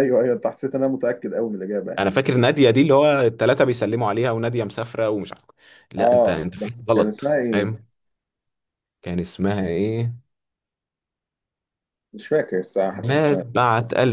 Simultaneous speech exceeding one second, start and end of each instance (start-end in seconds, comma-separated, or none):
6.0-7.8